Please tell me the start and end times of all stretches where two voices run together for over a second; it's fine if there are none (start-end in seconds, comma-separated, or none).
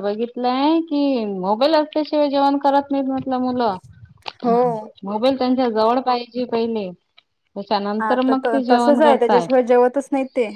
8.0-9.4